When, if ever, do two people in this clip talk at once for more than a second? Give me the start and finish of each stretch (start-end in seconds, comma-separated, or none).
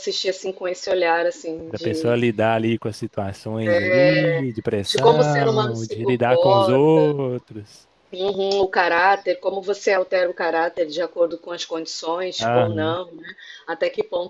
4.8-7.0